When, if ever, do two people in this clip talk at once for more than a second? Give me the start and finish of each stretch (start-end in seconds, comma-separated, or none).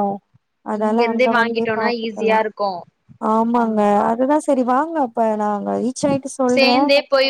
0.8-2.4